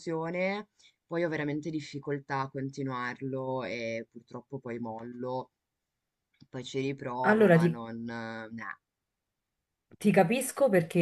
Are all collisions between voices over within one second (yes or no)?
yes